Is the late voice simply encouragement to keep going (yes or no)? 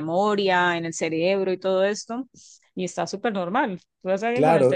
no